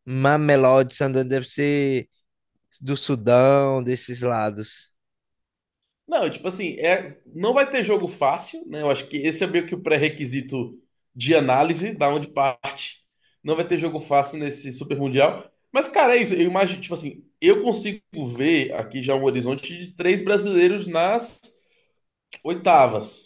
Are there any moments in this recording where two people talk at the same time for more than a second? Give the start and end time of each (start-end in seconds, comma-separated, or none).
none